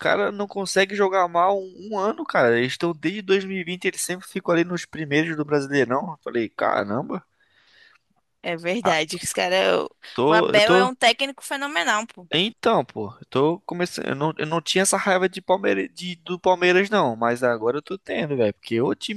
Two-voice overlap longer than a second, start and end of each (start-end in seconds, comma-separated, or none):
none